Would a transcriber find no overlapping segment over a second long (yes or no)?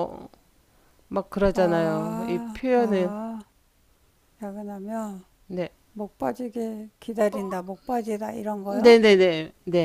no